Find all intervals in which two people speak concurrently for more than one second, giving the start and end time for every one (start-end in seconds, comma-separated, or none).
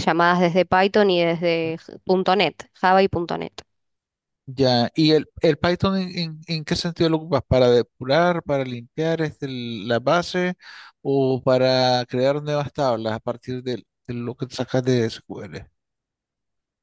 none